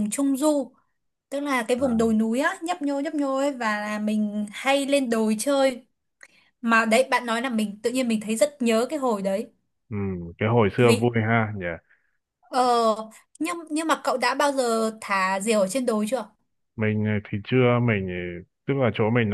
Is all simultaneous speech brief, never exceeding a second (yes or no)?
yes